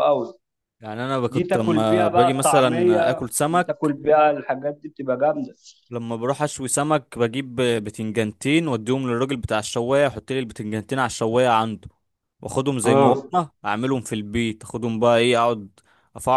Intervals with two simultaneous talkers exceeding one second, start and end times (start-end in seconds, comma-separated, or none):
1.3-4.0